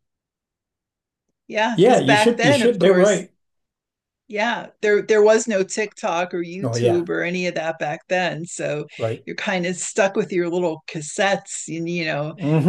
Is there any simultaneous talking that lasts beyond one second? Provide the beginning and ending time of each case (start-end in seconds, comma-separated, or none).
1.8-3.2